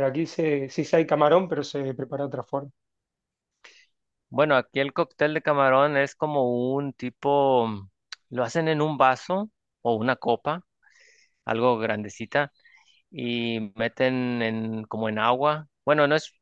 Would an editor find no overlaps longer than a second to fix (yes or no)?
yes